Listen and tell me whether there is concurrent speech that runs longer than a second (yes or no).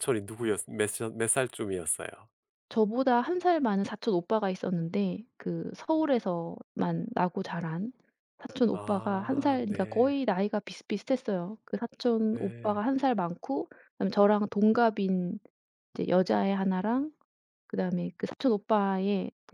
yes